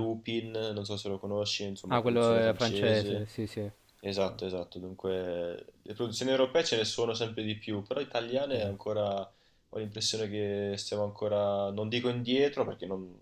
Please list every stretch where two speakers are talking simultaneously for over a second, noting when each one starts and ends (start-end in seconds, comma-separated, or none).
1.9-3.3